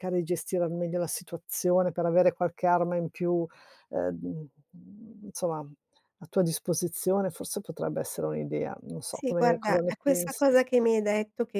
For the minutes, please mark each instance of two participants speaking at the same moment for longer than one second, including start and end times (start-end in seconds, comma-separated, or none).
9.1-10.4